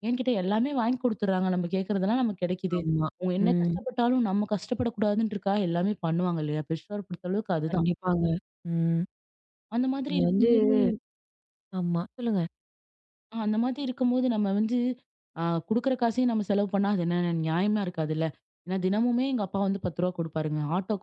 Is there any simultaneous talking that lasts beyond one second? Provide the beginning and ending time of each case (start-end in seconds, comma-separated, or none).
none